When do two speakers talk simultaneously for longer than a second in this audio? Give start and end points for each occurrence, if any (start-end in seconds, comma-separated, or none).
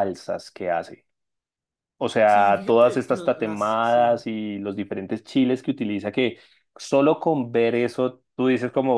2.2-4.2